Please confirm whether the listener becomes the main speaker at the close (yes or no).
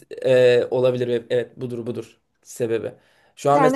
no